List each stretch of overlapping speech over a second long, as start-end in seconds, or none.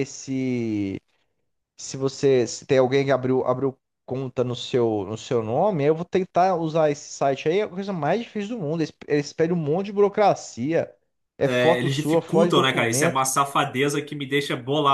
11.4-13.2